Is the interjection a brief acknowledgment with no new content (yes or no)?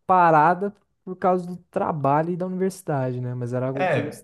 yes